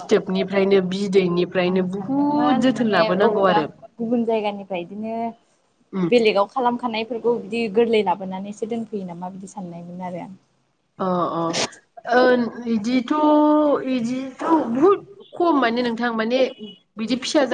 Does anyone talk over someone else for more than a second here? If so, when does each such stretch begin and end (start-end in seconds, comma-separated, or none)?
1.7-3.6